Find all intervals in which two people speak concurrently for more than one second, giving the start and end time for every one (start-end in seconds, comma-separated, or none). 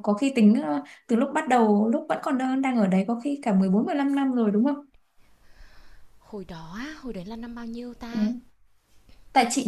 none